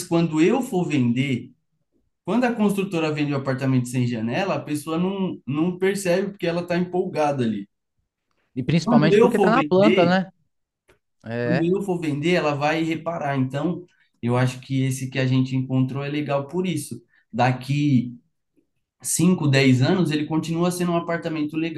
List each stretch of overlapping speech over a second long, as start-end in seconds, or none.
8.8-10.2